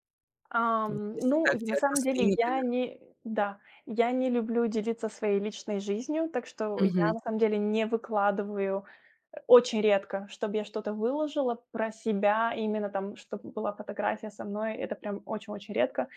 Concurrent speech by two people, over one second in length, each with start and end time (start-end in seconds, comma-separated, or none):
0.9-2.6